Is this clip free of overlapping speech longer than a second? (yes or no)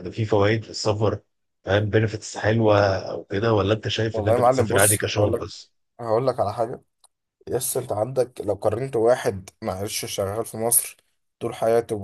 no